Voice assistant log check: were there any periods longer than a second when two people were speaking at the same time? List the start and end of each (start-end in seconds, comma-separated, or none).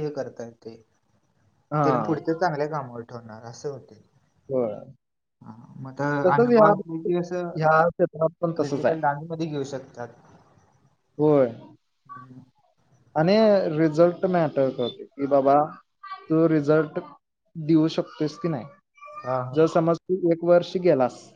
6.3-7.5